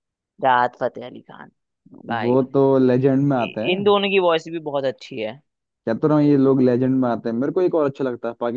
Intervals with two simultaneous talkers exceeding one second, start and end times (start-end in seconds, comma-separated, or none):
none